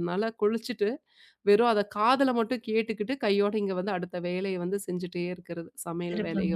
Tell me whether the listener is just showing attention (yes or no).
no